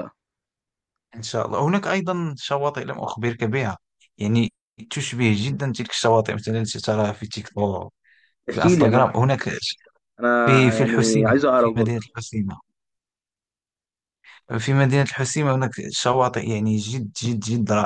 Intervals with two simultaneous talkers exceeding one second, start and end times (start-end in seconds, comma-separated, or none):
10.4-12.0